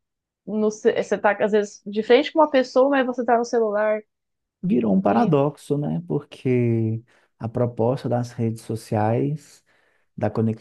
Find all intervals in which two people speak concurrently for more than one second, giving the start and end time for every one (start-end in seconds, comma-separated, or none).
none